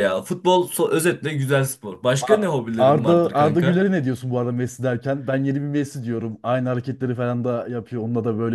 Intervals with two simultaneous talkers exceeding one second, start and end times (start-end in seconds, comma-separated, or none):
2.2-3.8